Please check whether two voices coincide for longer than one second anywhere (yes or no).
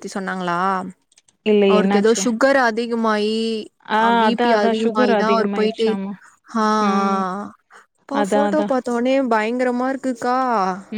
no